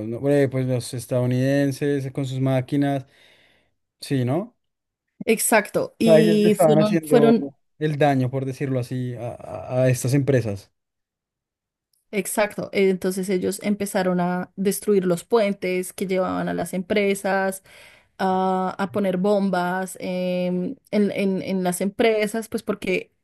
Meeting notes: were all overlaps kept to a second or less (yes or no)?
no